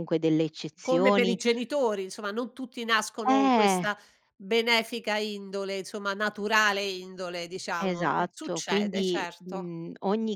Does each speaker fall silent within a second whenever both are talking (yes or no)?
no